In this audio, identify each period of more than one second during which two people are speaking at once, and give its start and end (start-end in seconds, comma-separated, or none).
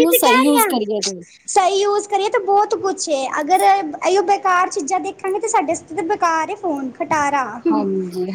none